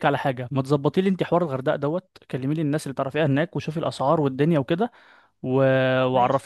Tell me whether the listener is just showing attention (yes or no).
yes